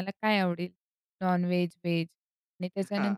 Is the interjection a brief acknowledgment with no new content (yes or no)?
yes